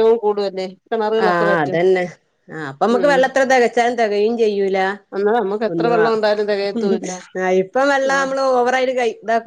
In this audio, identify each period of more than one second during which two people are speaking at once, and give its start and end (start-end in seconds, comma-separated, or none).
5.7-7.1